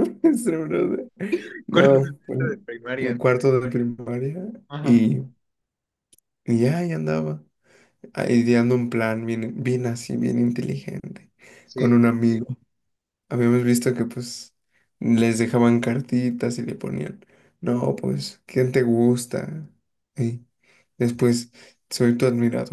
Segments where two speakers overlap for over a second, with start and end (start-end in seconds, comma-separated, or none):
1.7-3.2